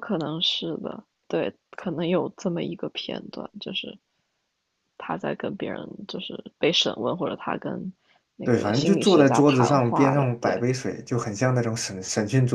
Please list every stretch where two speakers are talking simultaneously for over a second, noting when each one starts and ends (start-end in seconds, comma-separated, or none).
8.4-10.6